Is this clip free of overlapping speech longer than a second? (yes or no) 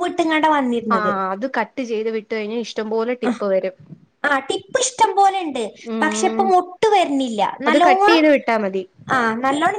yes